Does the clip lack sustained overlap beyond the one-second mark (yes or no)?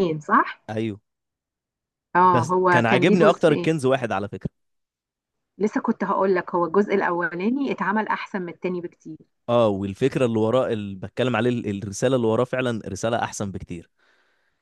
no